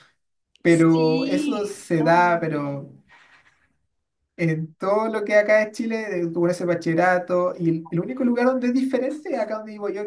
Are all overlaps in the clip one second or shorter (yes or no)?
no